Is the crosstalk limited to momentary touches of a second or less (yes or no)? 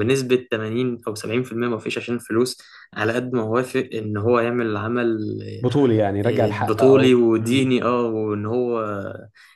no